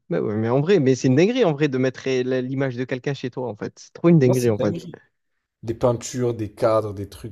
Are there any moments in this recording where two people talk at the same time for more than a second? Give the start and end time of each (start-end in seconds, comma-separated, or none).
none